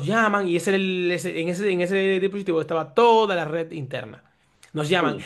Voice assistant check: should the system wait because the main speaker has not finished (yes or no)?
yes